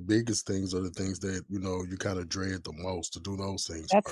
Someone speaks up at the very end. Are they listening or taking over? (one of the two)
taking over